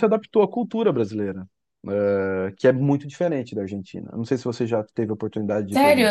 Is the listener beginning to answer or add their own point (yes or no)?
yes